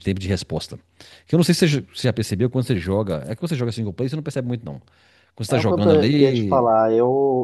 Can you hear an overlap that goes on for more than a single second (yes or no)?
yes